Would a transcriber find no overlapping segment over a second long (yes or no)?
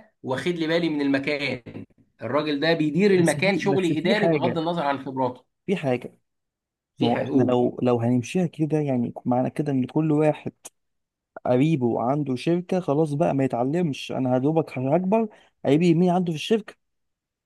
no